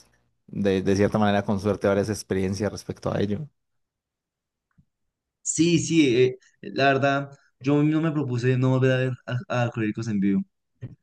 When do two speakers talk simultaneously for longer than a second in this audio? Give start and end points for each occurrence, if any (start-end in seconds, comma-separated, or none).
none